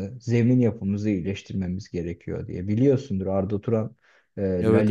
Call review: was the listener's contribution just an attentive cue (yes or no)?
yes